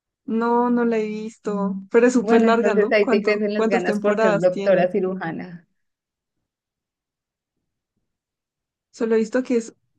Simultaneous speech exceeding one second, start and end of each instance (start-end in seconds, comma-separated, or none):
2.2-4.9